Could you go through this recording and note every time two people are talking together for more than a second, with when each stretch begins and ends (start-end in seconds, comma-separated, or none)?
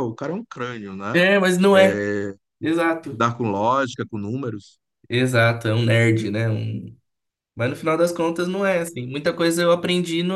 none